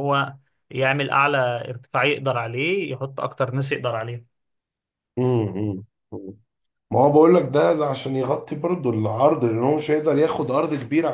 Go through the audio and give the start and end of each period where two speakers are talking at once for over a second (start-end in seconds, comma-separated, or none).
none